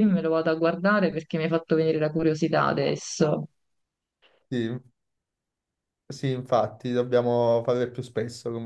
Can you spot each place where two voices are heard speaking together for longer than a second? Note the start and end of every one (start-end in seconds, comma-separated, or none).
none